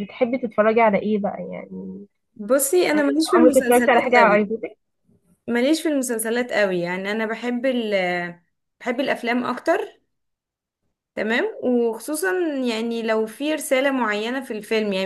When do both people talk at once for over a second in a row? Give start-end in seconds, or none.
2.9-4.4